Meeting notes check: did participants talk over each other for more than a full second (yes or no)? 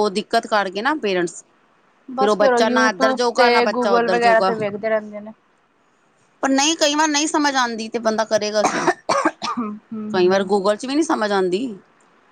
yes